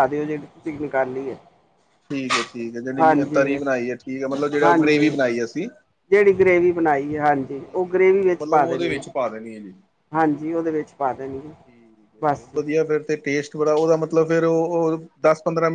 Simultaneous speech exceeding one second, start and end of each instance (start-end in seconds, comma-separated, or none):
7.5-9.0